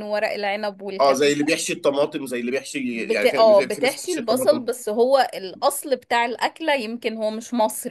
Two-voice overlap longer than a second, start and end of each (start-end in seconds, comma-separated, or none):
2.9-4.7